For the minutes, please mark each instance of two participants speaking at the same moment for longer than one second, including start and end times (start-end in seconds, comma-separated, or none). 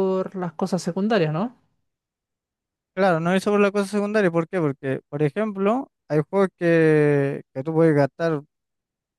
none